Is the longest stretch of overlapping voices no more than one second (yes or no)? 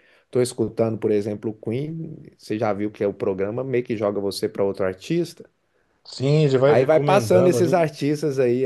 no